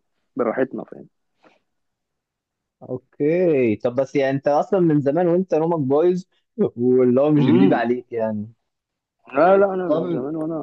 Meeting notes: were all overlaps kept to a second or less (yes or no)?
yes